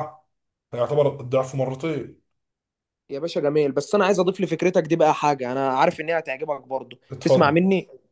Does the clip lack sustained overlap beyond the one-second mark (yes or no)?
yes